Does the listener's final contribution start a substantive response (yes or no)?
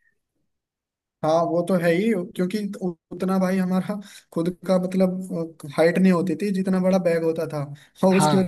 no